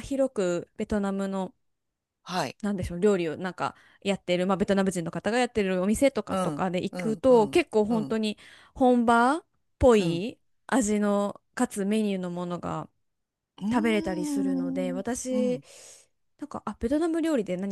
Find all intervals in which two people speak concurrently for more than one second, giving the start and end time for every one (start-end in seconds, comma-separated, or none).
6.3-8.2, 13.7-15.6